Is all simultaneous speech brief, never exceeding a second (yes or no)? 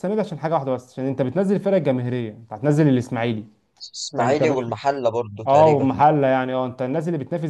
yes